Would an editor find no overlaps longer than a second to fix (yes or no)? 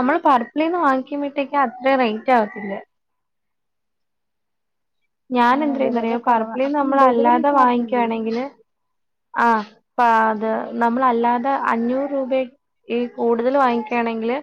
no